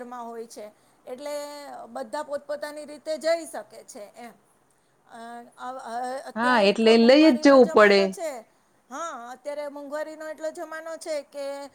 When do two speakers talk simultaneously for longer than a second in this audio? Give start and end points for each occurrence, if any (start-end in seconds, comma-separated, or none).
6.4-8.0